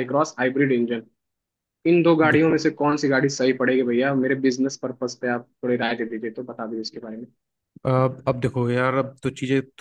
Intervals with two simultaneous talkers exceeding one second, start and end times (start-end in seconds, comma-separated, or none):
none